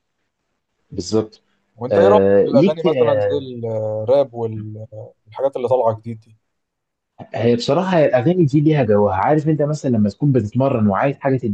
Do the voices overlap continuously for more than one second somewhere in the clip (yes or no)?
yes